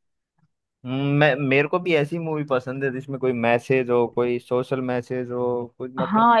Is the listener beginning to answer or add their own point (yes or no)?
yes